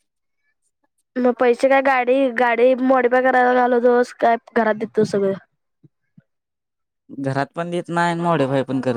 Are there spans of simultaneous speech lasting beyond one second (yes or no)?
no